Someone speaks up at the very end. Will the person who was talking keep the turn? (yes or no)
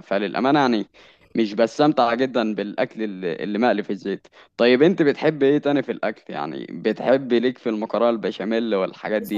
no